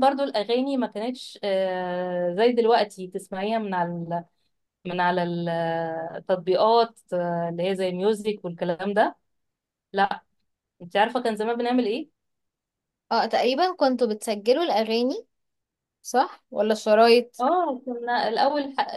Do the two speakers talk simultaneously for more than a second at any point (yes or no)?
no